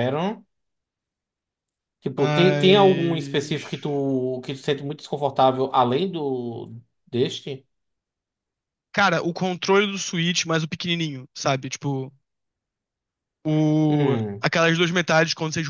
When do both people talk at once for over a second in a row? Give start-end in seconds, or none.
2.2-3.6